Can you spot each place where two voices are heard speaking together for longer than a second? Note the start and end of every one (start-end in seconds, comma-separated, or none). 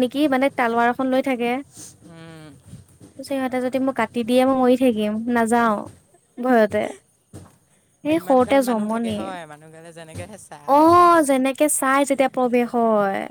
none